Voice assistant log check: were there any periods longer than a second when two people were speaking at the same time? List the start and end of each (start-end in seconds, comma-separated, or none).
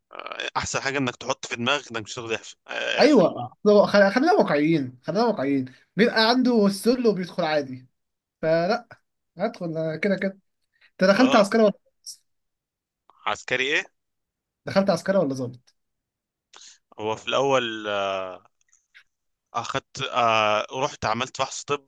none